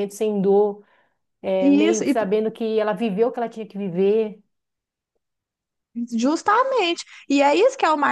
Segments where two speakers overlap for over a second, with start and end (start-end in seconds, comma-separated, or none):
none